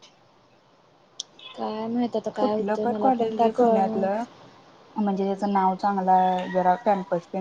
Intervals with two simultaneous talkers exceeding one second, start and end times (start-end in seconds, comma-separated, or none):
2.4-4.0